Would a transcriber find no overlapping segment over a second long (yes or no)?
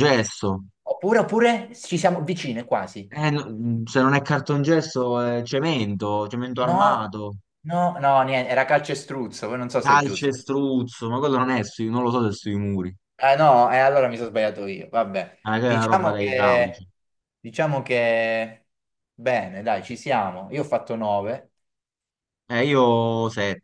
no